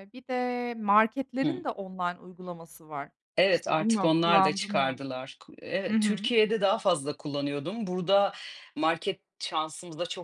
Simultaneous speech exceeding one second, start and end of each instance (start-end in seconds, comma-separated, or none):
3.5-5.0